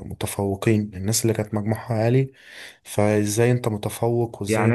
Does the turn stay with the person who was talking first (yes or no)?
no